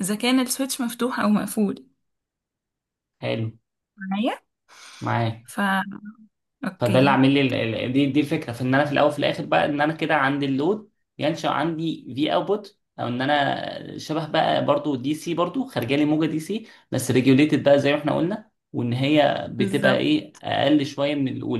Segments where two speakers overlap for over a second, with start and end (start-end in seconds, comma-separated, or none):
none